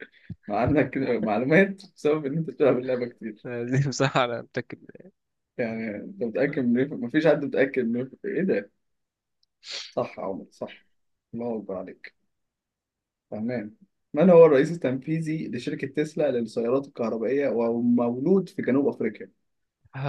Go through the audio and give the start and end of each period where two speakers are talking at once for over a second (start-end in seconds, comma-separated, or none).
none